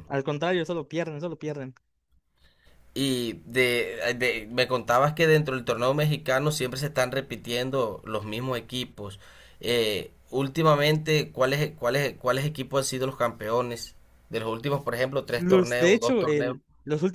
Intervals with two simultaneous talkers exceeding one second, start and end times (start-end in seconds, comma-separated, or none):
15.3-16.6